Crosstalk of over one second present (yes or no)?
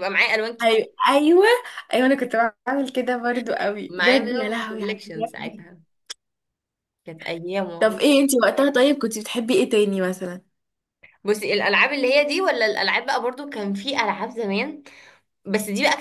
yes